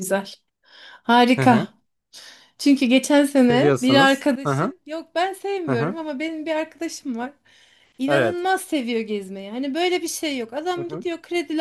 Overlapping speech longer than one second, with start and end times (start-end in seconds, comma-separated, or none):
3.4-4.7